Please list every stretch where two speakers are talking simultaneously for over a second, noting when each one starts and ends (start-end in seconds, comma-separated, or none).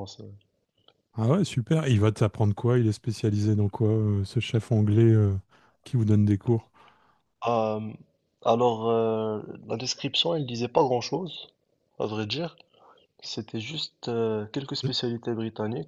none